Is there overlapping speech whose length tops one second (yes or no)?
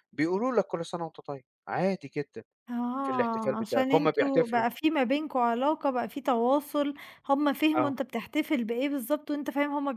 yes